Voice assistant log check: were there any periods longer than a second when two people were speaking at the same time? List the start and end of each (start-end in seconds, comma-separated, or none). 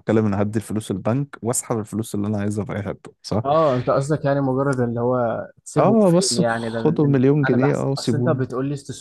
5.8-8.4